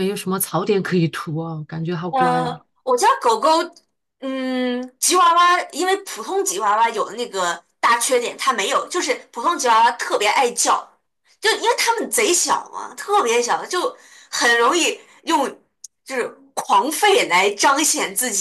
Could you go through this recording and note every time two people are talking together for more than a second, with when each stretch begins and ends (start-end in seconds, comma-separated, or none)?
none